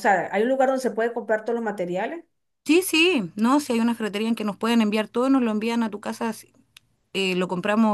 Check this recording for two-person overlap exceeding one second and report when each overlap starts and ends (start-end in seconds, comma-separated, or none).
none